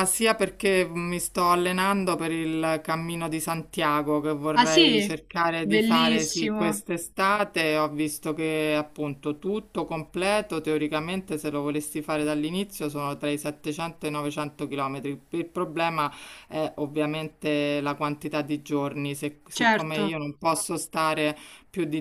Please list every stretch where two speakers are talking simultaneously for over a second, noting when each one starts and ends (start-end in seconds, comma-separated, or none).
5.6-6.8